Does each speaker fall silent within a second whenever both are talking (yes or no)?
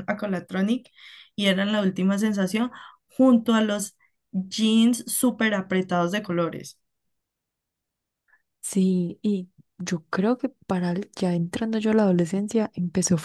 yes